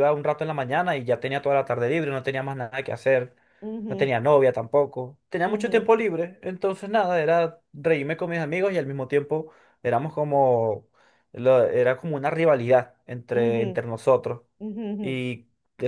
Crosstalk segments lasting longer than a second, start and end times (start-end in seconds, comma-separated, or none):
none